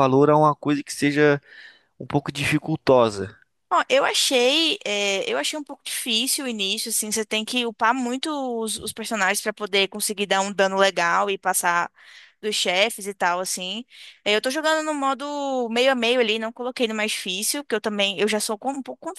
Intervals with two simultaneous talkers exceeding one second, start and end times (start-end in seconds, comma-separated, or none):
none